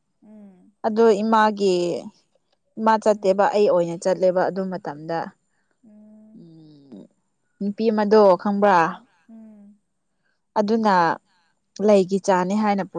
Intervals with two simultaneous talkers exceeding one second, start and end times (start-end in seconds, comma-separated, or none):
none